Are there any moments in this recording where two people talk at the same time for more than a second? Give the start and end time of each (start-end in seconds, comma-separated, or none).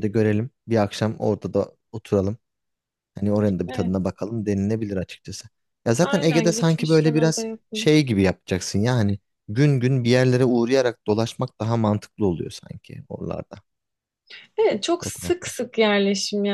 6.0-8.0